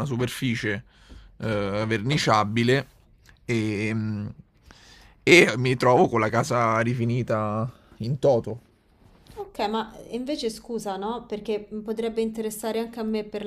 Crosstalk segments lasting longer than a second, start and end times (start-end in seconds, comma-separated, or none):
none